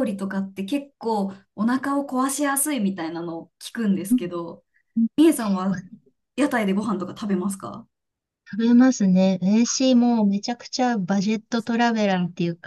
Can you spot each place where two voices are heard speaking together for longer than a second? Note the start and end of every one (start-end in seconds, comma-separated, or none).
none